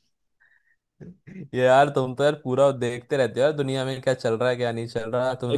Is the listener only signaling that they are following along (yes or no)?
yes